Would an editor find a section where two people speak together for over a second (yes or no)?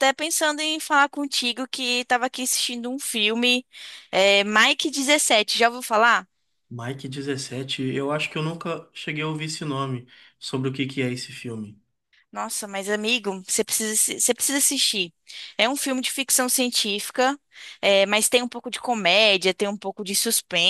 no